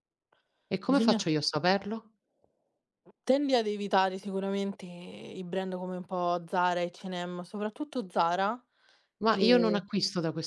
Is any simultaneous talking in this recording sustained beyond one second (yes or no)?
no